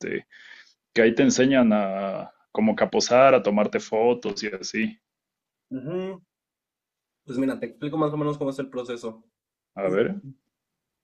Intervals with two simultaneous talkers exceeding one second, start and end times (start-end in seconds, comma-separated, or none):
none